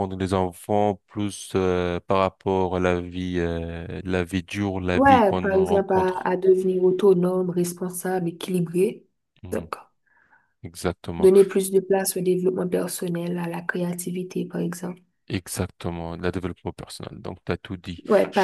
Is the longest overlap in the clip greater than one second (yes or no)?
yes